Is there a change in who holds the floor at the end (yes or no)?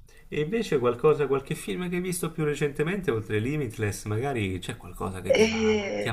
no